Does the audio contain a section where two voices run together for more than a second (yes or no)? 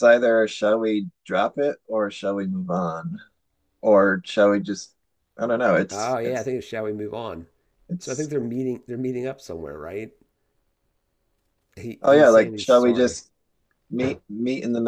yes